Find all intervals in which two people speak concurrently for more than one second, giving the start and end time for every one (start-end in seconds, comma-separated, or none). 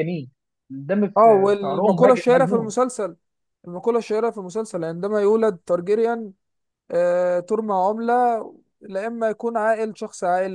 1.2-2.8